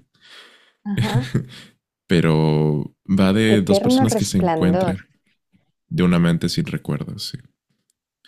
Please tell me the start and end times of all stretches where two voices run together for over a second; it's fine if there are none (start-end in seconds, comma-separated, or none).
3.6-5.0